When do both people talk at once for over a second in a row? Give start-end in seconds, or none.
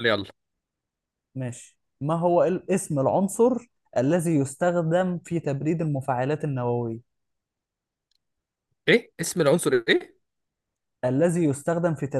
none